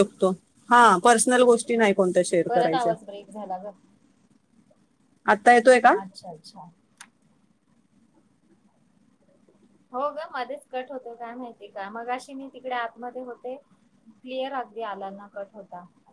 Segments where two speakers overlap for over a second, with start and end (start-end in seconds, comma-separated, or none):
none